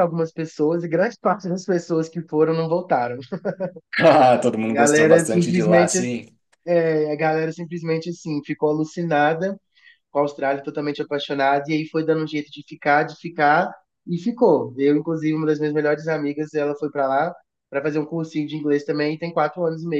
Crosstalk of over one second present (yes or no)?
yes